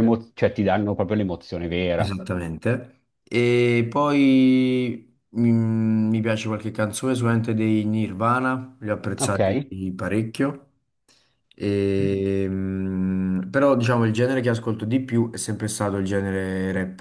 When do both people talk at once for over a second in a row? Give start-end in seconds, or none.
none